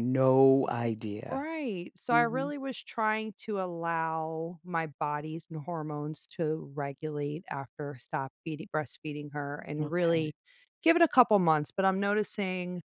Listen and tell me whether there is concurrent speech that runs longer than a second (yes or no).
no